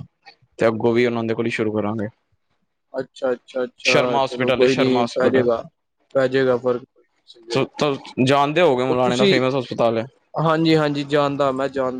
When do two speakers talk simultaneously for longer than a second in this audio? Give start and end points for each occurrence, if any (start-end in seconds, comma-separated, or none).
3.9-5.5